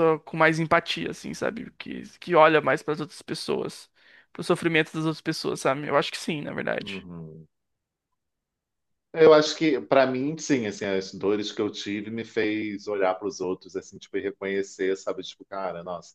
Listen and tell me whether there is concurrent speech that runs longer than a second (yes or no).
no